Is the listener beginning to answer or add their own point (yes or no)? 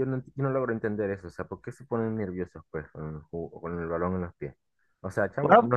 no